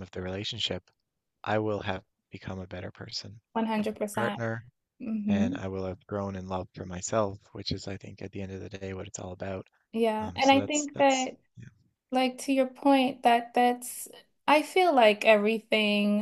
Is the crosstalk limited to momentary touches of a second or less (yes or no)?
no